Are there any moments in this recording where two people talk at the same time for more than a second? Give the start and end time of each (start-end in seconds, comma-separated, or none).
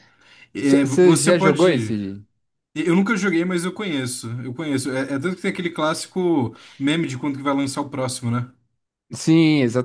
0.6-2.0